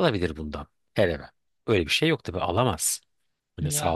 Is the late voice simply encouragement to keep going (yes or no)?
yes